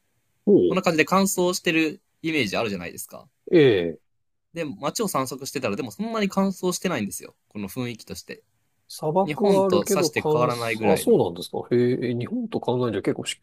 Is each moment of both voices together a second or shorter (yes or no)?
no